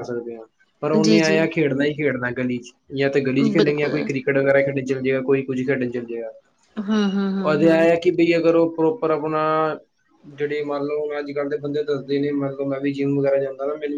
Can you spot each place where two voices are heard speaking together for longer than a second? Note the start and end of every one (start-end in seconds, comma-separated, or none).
none